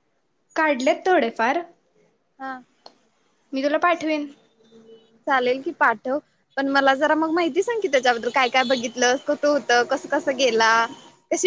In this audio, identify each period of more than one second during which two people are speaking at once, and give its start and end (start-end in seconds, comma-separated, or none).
none